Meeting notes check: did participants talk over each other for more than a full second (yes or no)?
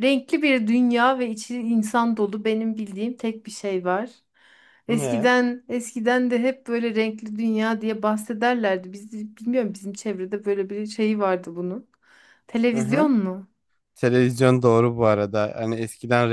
no